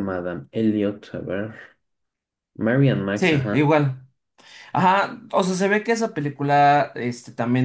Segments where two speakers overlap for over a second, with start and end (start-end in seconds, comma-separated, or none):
none